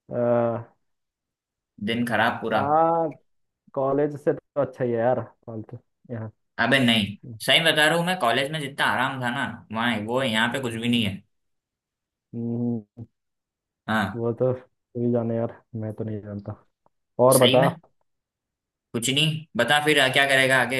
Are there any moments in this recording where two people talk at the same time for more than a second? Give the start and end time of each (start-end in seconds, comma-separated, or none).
none